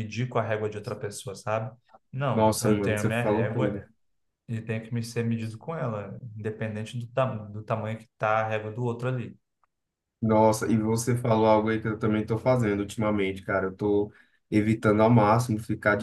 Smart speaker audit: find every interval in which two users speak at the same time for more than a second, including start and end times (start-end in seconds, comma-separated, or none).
2.3-3.8